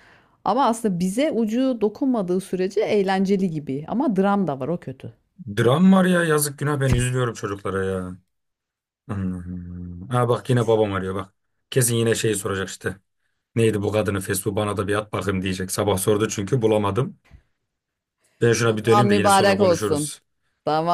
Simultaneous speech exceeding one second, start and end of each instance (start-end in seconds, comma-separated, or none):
18.6-20.1